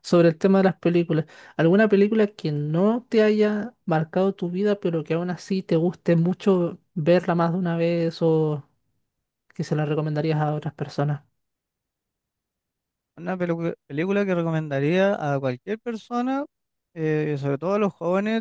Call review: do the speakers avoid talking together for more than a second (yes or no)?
yes